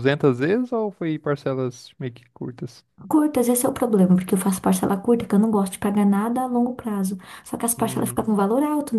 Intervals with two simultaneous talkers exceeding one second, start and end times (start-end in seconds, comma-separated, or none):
none